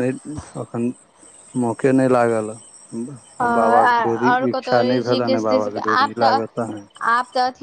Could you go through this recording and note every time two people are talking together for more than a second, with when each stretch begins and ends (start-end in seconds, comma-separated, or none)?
3.5-6.4